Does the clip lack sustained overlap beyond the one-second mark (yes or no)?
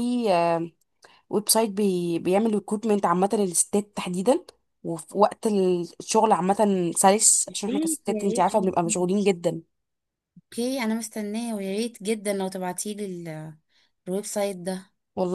no